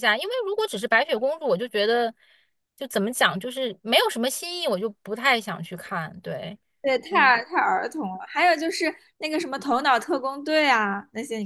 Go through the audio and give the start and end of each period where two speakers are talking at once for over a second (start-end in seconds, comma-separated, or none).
none